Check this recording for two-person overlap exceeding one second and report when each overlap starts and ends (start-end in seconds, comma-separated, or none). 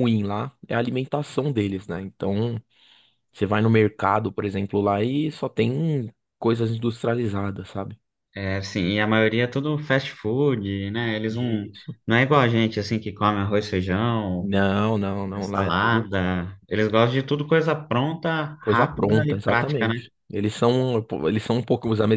18.6-19.9